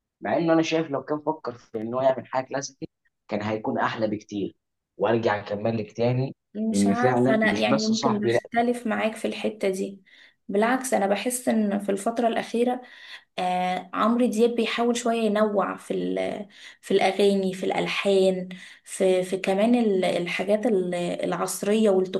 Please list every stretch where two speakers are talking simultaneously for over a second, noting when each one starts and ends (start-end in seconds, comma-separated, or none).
6.7-8.4